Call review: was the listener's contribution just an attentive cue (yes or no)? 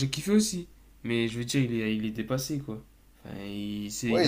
no